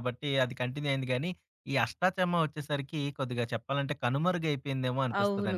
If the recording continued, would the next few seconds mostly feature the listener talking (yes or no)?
yes